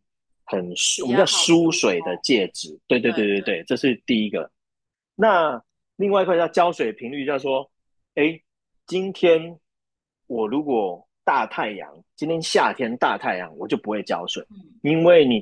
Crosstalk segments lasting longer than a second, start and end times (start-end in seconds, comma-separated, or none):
1.0-2.2